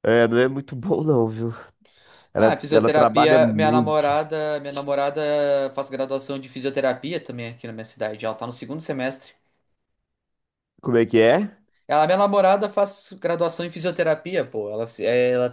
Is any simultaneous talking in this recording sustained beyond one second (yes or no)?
yes